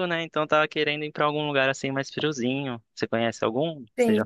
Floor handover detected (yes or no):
yes